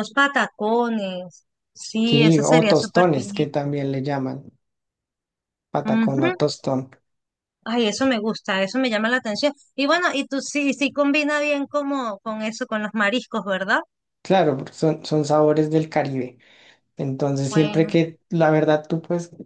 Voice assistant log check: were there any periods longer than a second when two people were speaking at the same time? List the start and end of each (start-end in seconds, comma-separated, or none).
2.0-3.5